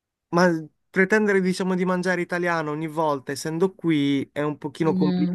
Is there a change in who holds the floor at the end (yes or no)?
no